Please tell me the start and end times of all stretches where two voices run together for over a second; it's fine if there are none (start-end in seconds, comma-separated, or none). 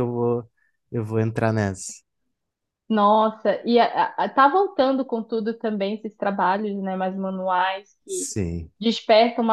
none